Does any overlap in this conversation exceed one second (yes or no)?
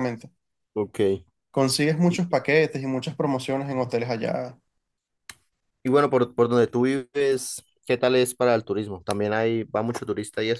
no